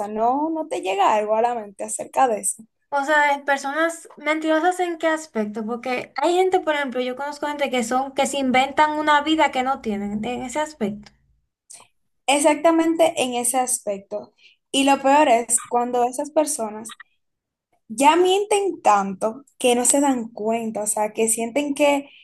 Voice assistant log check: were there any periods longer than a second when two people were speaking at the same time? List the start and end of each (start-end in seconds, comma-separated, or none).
none